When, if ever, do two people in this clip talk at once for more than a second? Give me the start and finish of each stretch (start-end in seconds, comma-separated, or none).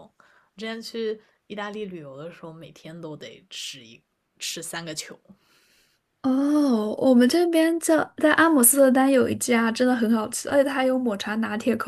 none